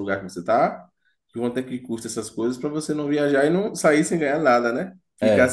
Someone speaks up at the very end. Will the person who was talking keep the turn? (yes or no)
yes